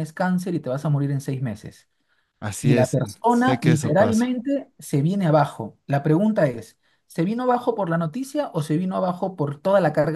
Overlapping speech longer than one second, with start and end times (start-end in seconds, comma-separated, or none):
2.6-4.4